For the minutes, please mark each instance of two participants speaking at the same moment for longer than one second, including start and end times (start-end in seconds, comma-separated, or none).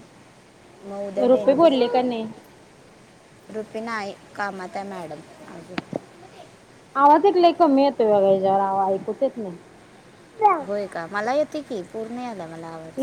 none